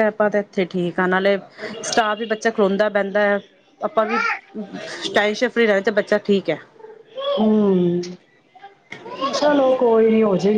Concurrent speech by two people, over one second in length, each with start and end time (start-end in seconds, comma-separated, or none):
none